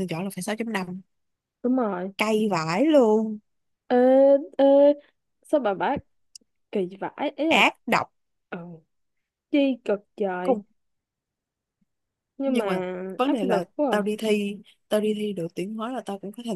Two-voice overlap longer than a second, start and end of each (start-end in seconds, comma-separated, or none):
12.4-14.2